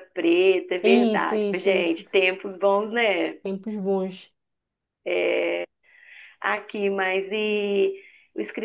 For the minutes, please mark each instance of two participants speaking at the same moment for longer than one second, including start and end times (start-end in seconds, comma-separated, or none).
0.8-2.0